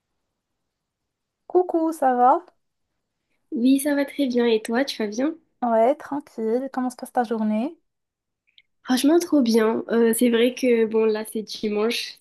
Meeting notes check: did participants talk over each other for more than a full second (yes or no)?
no